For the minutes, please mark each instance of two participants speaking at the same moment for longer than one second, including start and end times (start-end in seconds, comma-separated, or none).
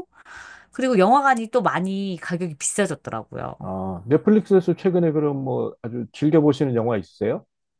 none